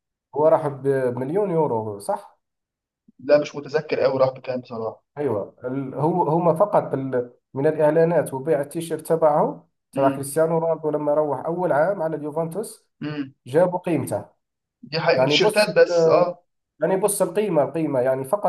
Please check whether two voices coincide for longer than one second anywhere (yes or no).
no